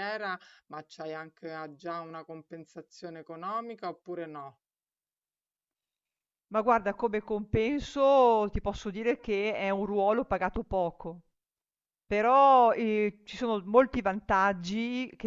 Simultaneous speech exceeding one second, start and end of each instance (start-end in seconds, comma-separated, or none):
none